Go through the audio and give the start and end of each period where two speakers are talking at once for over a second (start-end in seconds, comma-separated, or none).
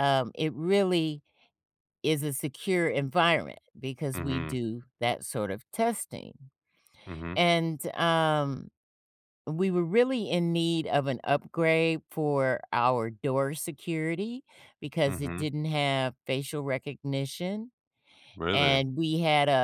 none